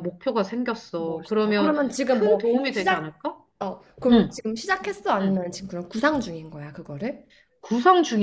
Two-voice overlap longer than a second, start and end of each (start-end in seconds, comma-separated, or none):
1.0-3.1